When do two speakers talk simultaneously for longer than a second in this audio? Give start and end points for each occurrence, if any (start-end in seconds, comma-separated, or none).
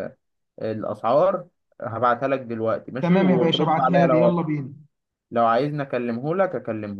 3.0-4.5